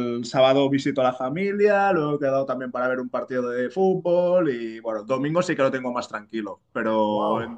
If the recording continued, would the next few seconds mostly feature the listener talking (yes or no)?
no